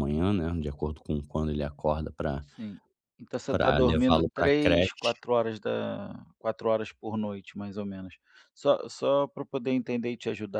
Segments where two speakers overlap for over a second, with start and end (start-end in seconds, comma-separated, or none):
3.5-5.1